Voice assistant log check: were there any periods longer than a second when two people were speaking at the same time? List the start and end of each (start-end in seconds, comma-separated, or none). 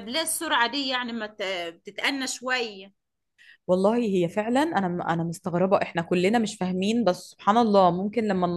none